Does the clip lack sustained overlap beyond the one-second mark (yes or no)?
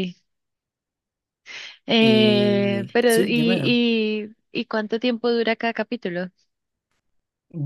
no